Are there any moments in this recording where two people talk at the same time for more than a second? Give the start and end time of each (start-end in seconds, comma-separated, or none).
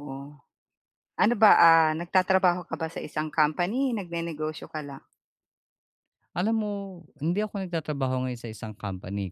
none